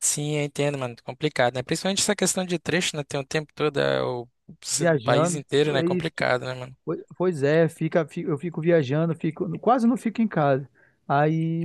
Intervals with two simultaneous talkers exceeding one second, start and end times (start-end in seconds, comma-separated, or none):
4.7-6.1